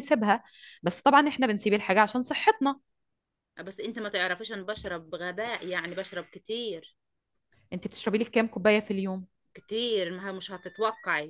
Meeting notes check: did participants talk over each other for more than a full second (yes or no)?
no